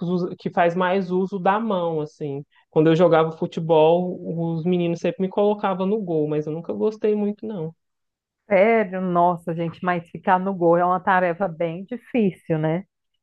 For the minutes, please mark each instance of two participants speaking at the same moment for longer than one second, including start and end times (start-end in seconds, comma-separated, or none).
none